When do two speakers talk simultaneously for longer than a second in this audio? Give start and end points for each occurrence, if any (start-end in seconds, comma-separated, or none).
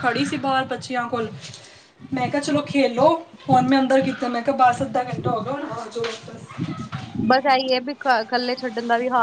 none